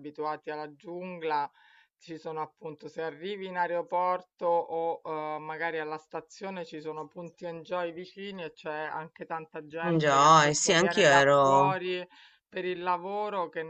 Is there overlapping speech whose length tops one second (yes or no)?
yes